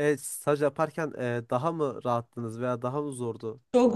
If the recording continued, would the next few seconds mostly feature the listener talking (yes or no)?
yes